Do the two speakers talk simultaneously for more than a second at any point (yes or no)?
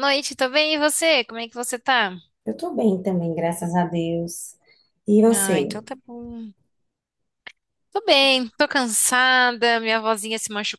no